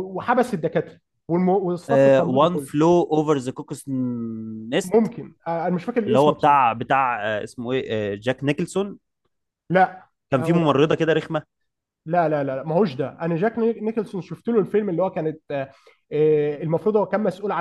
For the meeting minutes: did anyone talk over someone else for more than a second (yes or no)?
no